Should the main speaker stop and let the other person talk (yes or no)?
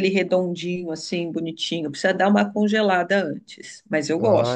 yes